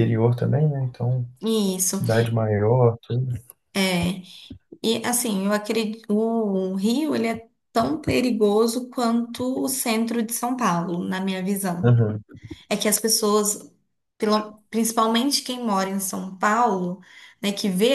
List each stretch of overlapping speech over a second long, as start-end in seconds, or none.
none